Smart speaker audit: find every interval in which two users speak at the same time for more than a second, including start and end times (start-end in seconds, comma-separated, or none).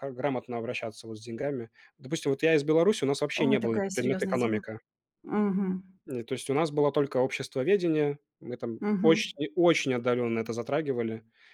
3.4-4.7